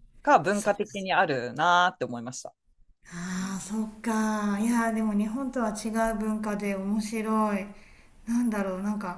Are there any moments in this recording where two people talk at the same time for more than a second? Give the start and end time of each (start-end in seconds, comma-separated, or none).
none